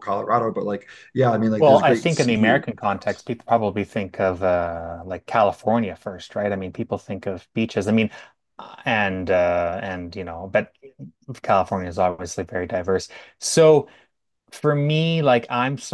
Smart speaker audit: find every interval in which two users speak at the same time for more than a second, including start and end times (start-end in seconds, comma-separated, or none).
1.6-3.3